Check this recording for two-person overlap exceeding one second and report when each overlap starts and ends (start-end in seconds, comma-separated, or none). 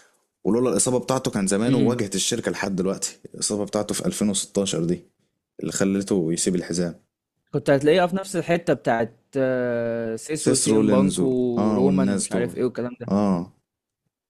10.4-12.6